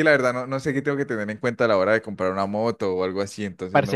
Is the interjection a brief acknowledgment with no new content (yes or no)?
no